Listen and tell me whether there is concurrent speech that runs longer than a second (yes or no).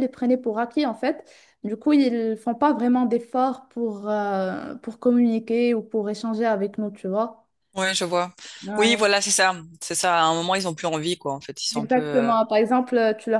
no